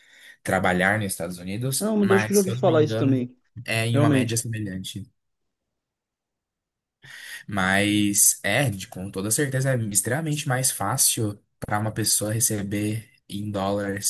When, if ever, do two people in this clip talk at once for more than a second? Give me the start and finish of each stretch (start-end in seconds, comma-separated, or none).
1.8-3.3